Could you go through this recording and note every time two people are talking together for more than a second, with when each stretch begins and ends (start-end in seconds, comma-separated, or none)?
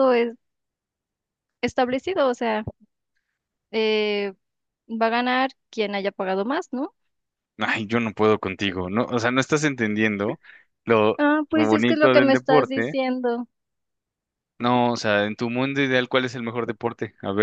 11.2-13.0